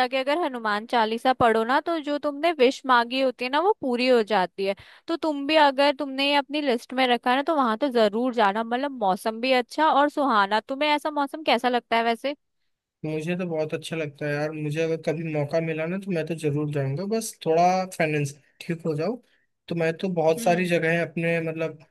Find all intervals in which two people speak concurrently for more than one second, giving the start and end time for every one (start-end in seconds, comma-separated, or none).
none